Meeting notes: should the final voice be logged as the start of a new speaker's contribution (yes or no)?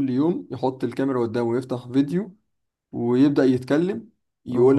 no